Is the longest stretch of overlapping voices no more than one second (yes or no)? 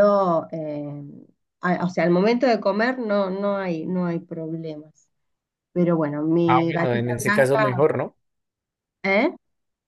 no